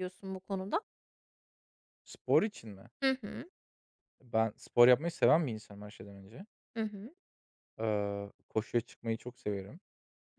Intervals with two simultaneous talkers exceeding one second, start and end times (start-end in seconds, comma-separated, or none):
none